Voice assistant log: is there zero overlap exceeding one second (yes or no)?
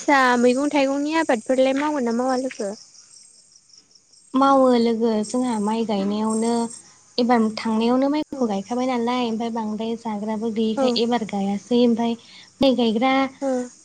yes